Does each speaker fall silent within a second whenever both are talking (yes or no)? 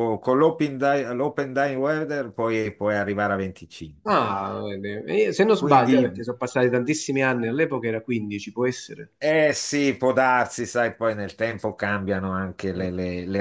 yes